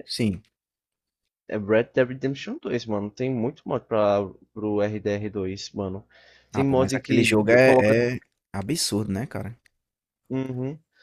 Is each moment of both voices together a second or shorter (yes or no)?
no